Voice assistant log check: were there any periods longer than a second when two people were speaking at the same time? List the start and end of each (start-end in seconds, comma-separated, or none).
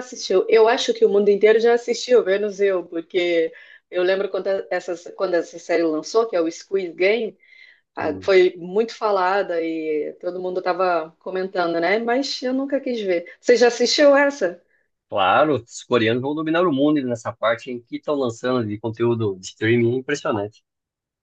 none